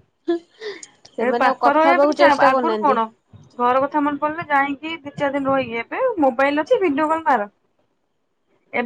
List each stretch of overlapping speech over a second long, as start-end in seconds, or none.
1.2-3.0